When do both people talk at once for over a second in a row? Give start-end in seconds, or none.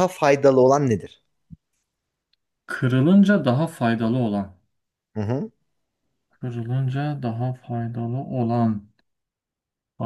none